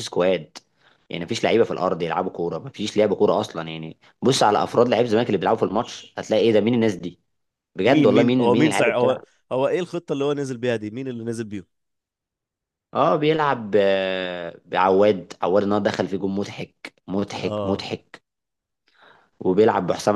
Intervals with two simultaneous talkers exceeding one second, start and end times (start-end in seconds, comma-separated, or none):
7.9-9.2